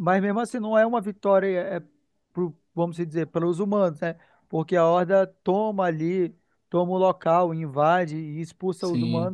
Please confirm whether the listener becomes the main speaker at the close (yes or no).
yes